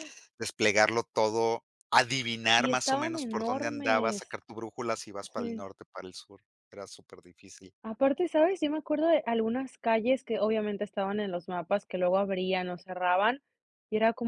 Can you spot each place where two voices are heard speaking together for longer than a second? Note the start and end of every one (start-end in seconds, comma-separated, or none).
2.5-4.2